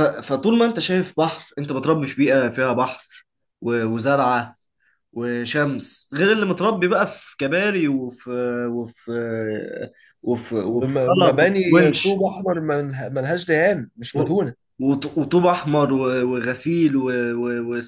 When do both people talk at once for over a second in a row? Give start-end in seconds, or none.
10.7-12.2